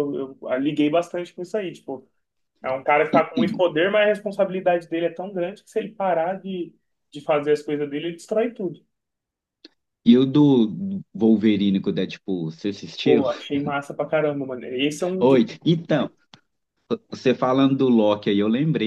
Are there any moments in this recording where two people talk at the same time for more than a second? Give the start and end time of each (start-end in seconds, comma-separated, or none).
none